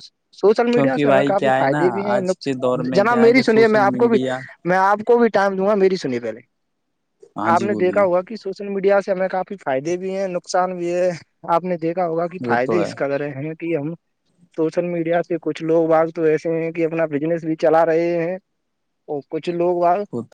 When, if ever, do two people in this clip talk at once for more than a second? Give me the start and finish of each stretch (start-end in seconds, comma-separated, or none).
0.7-4.2